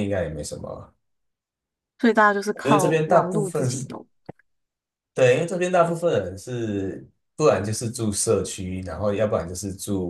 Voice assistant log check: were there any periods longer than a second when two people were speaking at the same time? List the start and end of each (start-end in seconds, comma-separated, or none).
2.6-3.9